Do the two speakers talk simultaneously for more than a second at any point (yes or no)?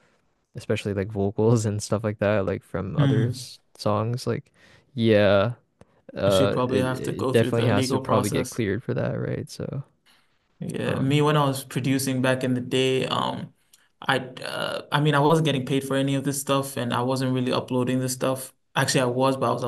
yes